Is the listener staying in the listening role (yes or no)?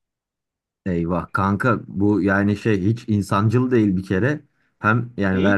yes